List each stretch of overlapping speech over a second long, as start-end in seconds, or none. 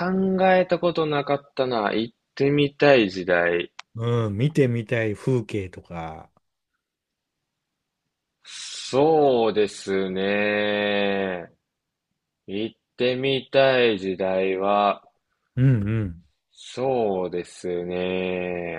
none